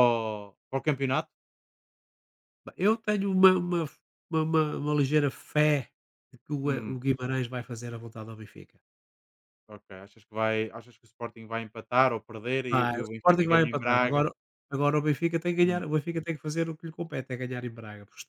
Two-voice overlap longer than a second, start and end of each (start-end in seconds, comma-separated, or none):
12.7-14.3